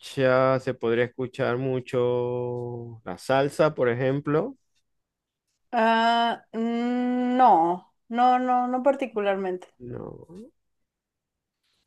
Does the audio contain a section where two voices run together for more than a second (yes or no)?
no